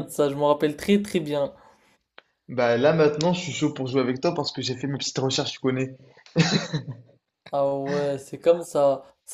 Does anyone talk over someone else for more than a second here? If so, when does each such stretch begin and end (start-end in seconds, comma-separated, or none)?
none